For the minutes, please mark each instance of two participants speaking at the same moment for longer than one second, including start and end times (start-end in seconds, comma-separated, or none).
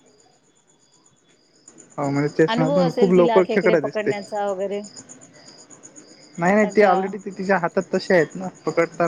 2.5-4.1